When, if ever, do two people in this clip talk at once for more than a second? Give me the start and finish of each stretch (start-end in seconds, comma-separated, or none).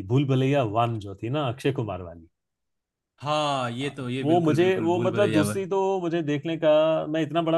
3.8-5.5